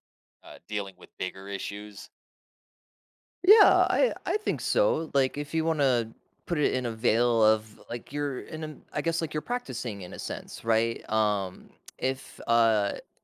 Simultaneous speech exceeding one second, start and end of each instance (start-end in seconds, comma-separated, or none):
none